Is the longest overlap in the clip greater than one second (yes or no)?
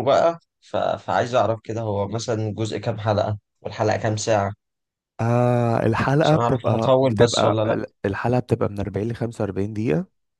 yes